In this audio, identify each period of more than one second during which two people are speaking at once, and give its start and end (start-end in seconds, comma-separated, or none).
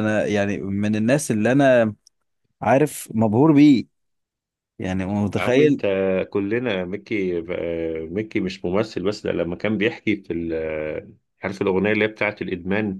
none